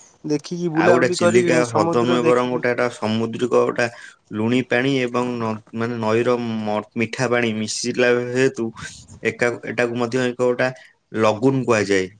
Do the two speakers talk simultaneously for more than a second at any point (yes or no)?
yes